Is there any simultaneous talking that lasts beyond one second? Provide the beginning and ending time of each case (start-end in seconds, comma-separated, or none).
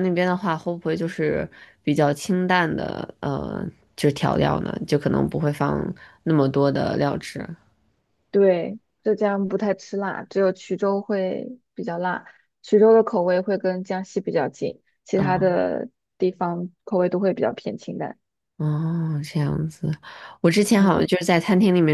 none